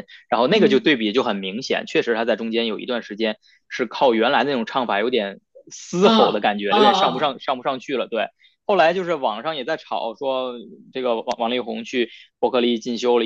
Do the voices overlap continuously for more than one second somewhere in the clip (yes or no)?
yes